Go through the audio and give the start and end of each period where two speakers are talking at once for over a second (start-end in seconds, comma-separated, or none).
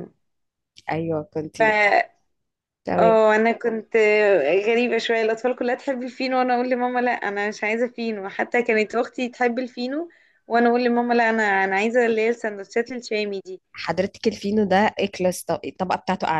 none